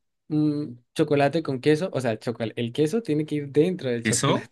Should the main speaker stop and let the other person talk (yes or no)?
yes